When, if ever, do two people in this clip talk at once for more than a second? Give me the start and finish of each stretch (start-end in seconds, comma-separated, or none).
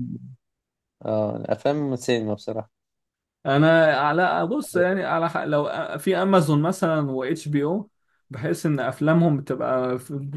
none